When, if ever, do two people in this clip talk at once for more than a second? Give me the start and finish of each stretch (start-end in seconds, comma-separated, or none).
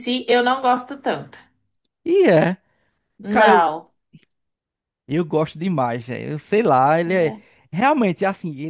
none